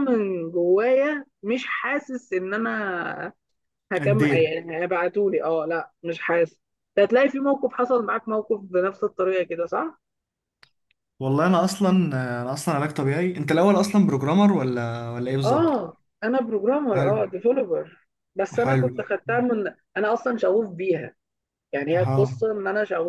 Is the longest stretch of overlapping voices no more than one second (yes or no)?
yes